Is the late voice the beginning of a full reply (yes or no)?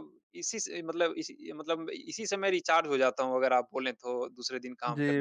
yes